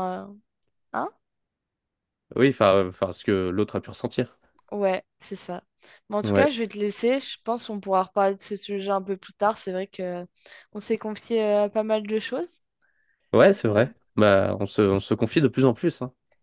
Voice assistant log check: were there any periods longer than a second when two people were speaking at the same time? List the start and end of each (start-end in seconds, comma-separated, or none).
none